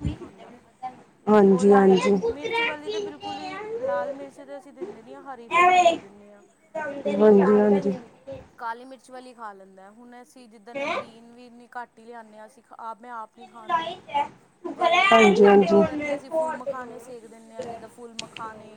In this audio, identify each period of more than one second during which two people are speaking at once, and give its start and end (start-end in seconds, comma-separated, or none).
1.5-3.1